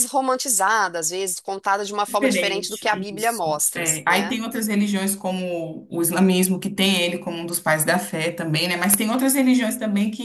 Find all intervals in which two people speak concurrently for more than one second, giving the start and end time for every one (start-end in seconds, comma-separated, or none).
2.0-4.4